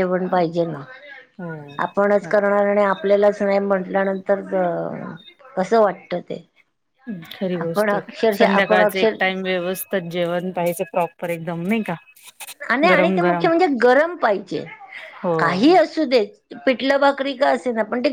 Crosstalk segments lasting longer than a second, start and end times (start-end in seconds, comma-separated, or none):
7.6-9.2